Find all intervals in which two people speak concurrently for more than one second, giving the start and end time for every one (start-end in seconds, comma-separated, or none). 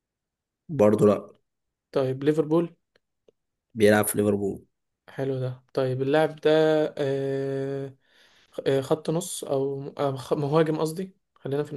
none